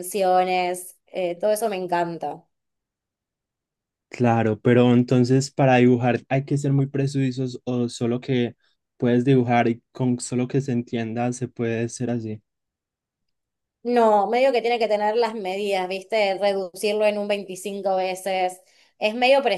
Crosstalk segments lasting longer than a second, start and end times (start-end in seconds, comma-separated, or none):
none